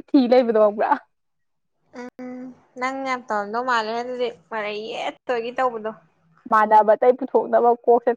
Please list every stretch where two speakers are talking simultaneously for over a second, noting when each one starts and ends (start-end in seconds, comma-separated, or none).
none